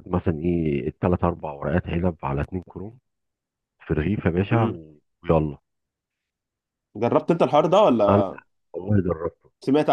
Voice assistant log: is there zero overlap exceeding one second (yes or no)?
yes